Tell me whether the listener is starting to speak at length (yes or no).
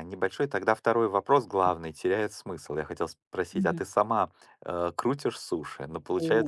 yes